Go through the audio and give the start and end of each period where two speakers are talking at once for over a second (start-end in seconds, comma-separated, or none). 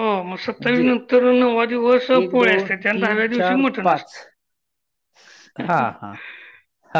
2.2-4.1